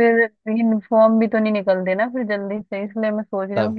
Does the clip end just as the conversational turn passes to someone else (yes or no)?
no